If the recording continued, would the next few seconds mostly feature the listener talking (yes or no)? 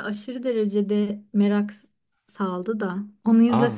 no